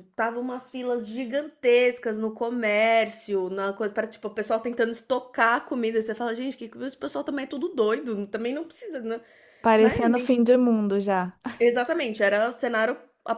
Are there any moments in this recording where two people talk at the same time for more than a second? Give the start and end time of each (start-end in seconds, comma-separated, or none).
none